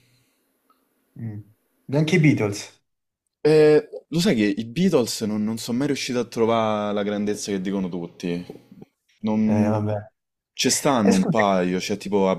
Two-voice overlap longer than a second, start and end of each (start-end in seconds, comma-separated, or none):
none